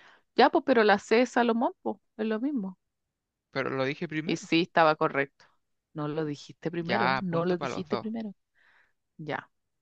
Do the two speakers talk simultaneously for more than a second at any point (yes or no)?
yes